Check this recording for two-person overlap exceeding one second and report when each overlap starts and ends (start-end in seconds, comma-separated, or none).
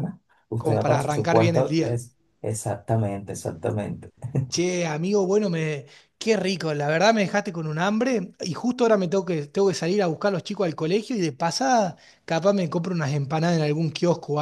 0.6-1.9